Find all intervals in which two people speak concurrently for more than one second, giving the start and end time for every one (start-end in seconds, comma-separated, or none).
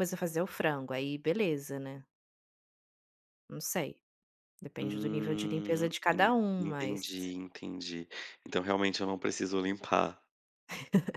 4.8-7.0